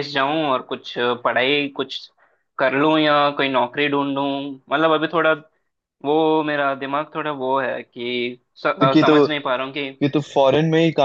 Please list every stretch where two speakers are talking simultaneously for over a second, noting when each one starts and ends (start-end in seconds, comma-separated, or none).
none